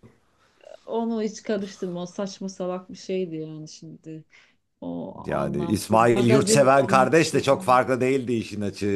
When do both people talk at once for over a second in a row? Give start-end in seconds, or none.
5.2-7.5